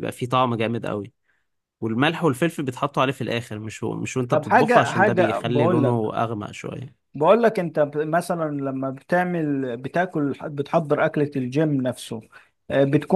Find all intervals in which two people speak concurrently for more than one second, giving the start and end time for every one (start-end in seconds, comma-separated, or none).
4.3-6.1